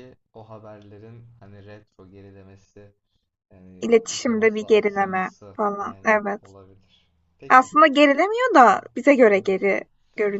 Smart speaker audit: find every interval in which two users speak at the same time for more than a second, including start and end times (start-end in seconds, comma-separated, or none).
3.8-6.5